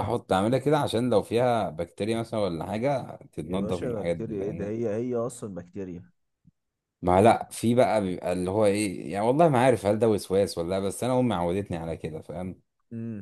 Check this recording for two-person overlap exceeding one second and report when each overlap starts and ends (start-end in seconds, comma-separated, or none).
3.5-4.8